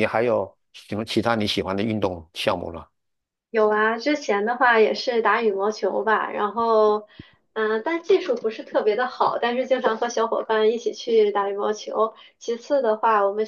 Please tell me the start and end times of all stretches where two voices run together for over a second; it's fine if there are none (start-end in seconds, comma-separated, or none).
none